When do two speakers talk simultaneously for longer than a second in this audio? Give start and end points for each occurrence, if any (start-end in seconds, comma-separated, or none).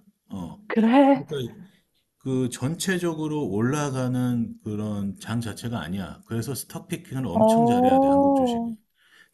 7.3-8.7